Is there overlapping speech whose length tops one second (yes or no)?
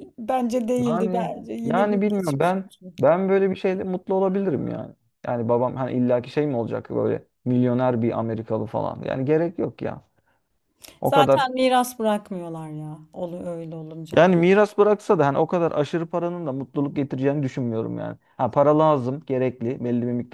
yes